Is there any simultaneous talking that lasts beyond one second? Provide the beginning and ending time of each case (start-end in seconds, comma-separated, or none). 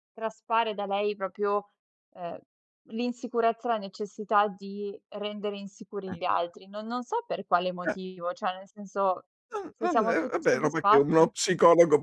9.7-11.3